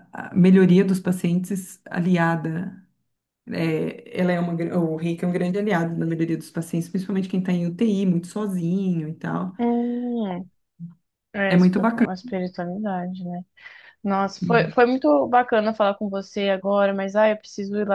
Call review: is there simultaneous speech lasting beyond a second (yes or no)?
no